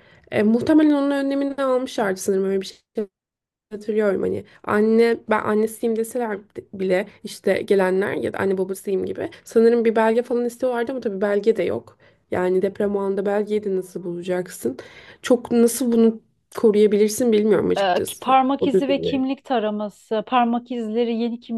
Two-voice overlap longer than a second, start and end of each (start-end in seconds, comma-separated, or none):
17.8-19.2